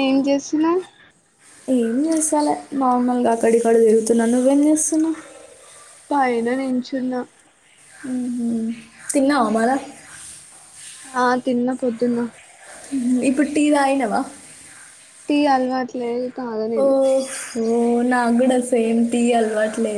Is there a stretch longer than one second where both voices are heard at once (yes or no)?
no